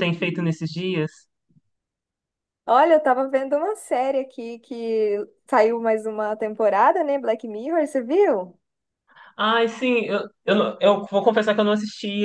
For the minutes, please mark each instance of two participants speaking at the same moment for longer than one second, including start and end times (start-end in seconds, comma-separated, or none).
none